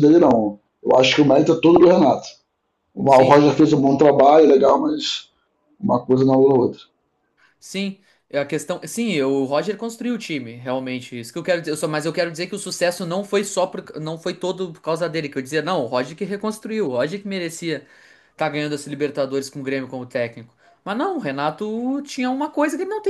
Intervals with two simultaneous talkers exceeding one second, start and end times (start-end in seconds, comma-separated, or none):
none